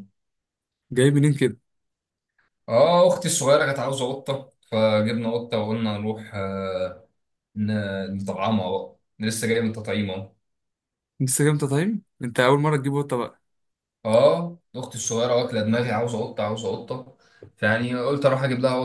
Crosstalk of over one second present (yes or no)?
no